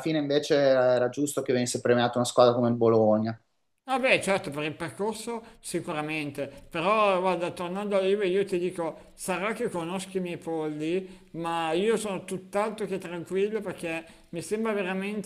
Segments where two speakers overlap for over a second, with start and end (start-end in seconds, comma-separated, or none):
none